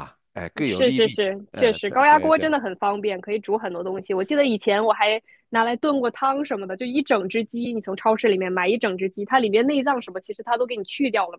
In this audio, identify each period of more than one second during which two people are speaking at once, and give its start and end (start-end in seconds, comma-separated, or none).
0.7-2.5